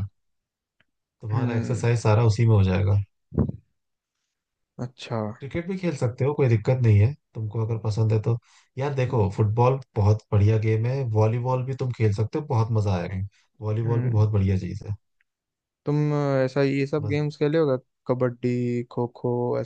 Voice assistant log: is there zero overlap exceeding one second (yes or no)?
yes